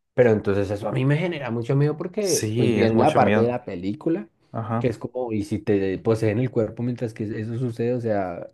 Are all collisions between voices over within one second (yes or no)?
no